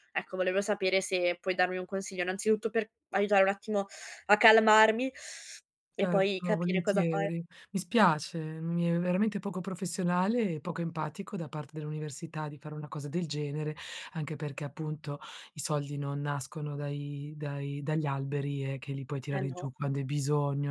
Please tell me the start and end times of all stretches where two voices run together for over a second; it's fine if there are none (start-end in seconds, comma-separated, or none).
6.0-7.3